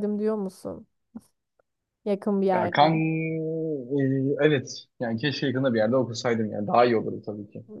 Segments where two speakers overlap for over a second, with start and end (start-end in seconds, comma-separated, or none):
none